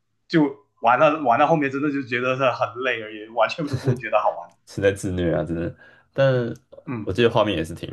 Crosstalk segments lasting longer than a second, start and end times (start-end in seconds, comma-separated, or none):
none